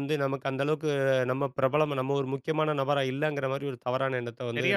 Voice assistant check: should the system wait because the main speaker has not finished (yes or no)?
no